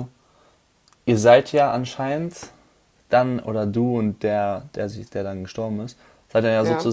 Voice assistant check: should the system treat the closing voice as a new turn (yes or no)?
no